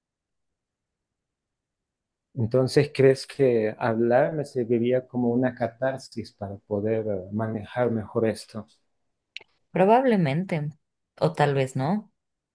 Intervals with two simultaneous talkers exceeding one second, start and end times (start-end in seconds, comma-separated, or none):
none